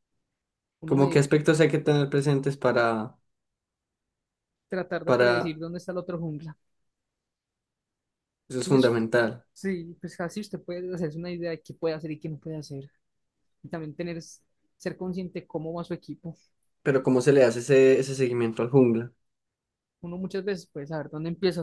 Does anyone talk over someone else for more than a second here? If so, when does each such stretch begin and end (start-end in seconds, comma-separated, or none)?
none